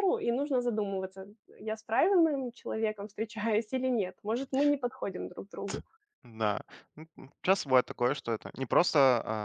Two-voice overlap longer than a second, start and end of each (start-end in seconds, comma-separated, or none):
none